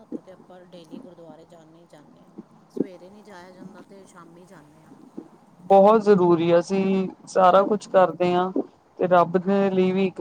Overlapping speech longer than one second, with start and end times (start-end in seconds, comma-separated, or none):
none